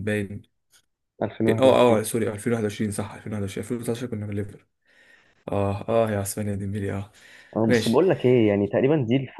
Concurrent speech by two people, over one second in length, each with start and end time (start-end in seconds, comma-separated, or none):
none